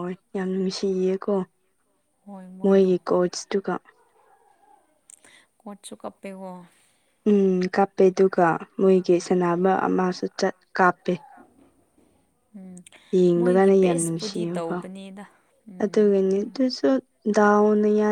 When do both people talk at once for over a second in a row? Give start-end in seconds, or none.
13.3-14.8